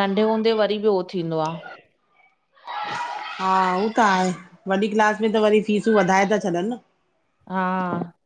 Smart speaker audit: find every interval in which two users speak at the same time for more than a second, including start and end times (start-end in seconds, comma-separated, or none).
none